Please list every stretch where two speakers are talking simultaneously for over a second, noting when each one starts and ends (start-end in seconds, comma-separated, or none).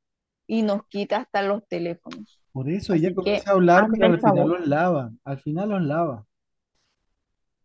2.9-4.5